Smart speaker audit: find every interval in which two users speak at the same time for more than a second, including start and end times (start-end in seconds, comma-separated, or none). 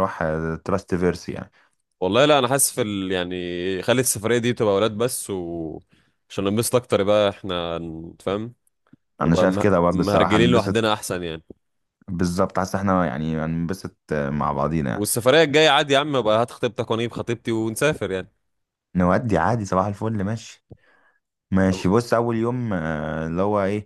9.2-10.8